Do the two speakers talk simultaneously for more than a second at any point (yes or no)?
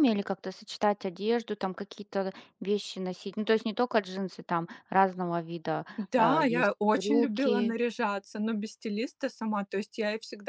yes